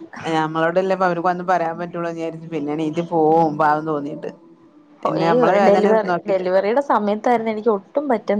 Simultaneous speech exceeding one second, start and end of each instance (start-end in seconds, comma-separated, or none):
none